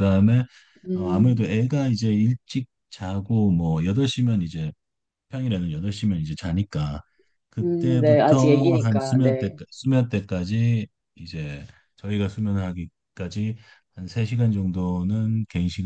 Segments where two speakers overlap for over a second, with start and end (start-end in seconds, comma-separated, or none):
7.6-9.6